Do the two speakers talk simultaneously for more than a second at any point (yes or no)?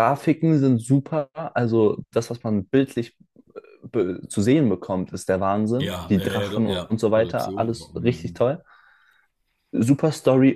yes